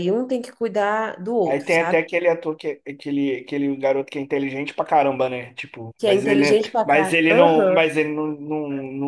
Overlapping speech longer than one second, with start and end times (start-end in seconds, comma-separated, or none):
6.0-7.9